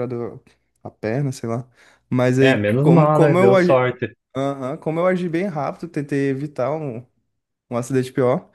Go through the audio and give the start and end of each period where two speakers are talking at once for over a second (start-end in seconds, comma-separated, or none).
2.4-3.8